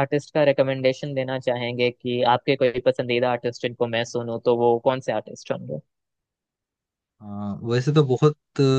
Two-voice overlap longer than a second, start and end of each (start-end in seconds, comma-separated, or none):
none